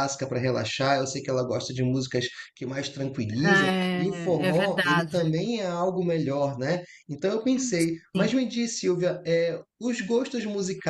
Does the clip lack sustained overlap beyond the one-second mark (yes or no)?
no